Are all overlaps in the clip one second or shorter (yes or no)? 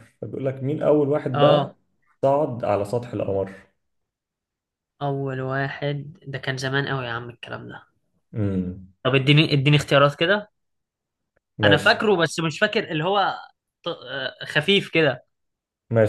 yes